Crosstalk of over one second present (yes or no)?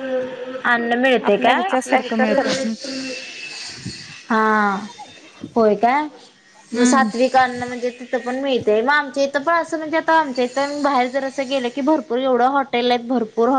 yes